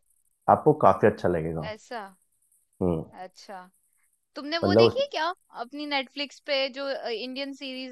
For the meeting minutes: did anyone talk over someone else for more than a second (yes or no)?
no